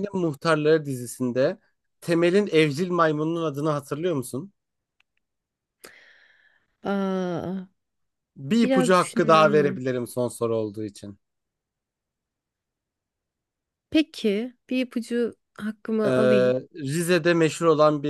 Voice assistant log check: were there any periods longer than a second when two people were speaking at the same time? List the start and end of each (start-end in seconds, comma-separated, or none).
8.6-9.9